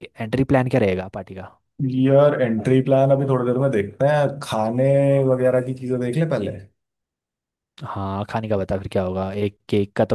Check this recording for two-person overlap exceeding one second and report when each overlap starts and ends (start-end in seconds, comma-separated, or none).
none